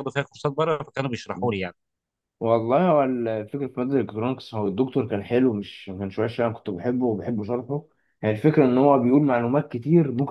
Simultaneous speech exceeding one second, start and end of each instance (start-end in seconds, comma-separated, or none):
none